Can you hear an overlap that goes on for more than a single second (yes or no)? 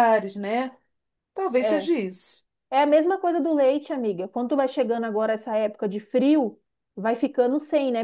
no